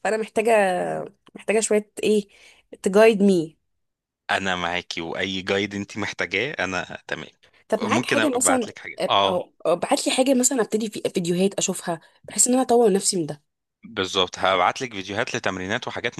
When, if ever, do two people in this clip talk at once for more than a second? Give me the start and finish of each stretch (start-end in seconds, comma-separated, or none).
7.8-9.4